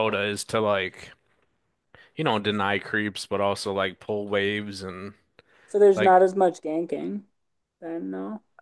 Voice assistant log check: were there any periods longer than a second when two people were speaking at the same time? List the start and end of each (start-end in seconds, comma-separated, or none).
none